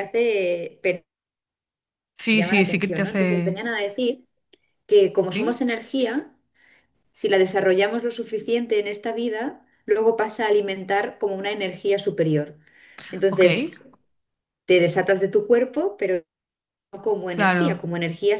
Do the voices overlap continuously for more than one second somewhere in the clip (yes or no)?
yes